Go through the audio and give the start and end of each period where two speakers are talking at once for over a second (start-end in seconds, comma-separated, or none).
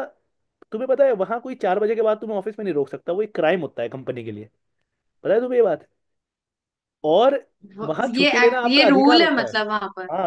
7.8-9.5